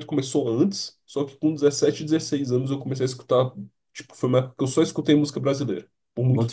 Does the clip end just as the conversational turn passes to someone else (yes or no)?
yes